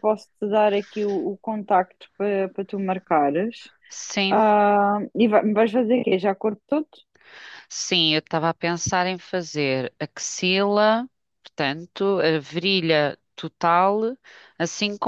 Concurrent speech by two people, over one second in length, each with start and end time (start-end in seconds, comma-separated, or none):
none